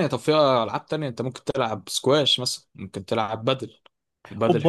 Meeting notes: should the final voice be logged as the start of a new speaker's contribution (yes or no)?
yes